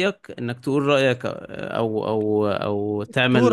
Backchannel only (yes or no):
no